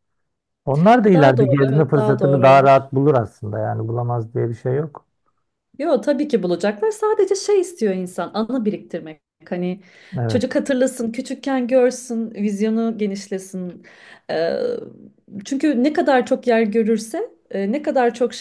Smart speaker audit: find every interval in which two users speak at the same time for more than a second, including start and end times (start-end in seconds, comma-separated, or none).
1.1-2.7